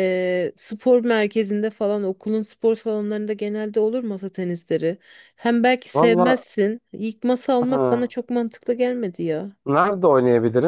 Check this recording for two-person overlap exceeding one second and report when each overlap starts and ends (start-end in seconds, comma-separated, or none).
none